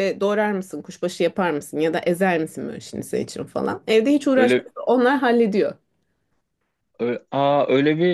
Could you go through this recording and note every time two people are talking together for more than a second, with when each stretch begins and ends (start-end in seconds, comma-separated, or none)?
none